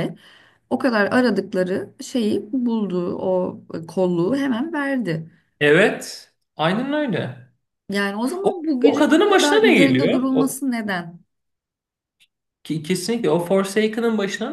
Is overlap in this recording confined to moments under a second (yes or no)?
no